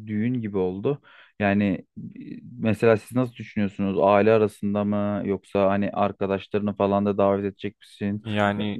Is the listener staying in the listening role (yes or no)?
yes